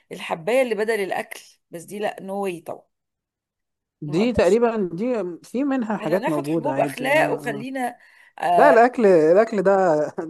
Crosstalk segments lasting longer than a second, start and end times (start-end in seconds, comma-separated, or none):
6.0-7.7